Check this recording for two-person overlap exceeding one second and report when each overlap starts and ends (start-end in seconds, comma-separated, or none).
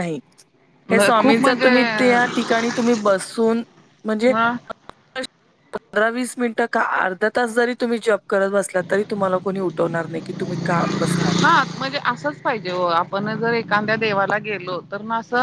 none